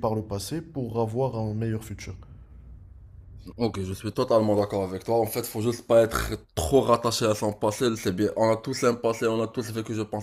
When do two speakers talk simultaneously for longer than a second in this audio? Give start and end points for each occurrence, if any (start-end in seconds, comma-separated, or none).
none